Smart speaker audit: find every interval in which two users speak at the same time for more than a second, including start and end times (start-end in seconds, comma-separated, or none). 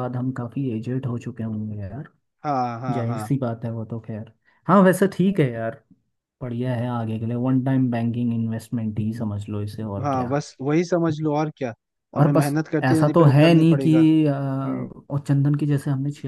12.2-14.1